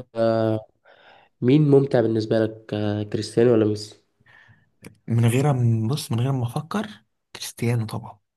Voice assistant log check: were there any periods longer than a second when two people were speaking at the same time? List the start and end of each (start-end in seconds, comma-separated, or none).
none